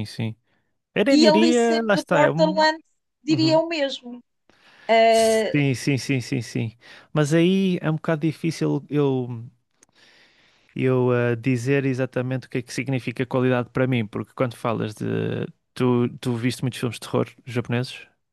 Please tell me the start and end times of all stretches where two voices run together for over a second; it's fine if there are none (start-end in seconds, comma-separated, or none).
1.1-2.6